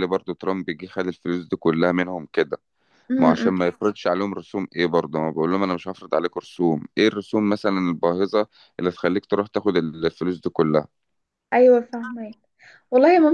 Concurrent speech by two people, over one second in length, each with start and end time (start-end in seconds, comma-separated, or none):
none